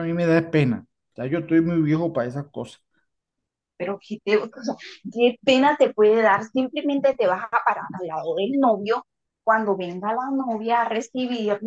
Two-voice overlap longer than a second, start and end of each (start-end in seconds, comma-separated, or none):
none